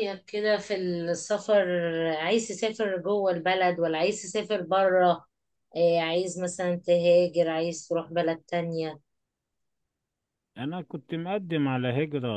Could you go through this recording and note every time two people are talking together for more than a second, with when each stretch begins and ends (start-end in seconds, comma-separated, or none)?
none